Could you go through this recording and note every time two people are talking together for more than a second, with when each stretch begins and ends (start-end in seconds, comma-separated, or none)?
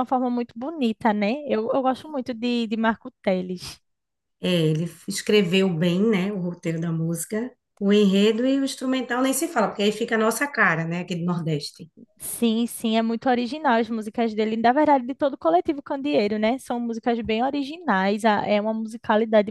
none